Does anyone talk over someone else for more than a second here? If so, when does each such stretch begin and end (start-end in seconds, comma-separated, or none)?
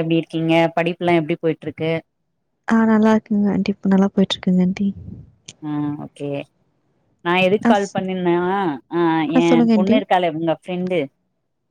none